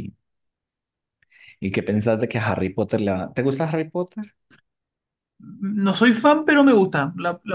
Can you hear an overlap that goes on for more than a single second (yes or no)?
no